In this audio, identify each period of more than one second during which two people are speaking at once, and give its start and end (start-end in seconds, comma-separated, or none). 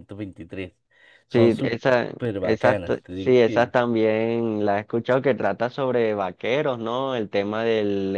1.3-3.7